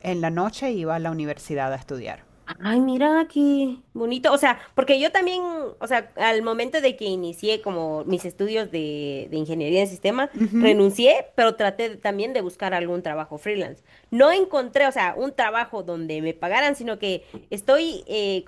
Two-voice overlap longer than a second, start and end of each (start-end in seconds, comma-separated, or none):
none